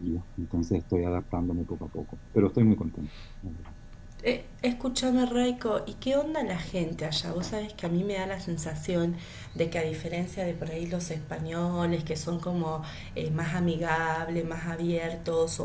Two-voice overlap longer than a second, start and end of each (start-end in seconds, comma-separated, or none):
none